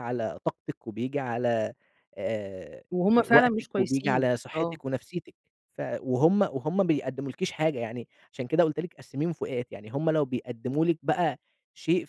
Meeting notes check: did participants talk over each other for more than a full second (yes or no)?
yes